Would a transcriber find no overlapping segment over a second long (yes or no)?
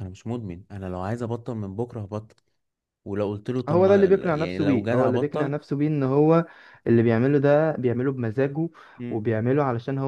no